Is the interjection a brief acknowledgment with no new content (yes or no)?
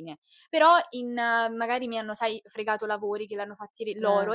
yes